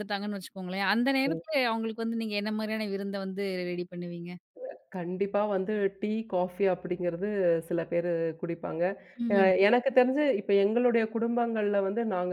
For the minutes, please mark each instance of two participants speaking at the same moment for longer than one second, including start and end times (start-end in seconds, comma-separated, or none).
none